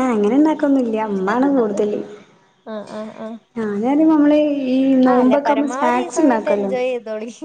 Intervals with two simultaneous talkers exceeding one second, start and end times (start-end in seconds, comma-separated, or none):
5.1-6.7